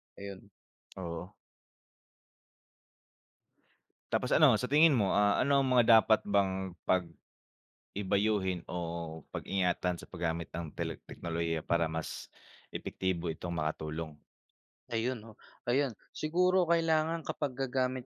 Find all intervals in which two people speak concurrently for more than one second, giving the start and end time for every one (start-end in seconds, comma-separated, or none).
none